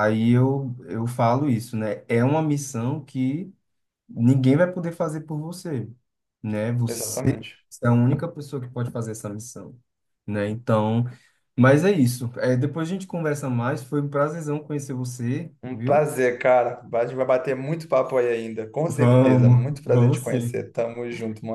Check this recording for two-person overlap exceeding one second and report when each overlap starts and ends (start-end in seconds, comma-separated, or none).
18.9-20.6